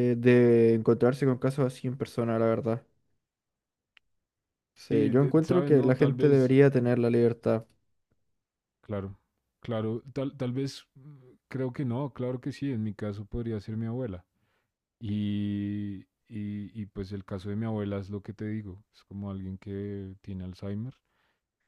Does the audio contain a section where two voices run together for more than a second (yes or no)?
yes